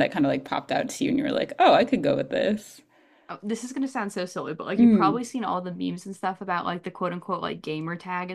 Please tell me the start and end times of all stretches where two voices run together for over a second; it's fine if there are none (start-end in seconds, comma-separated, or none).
none